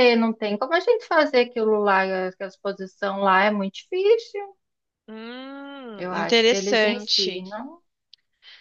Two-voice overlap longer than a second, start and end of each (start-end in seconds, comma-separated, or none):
6.0-7.4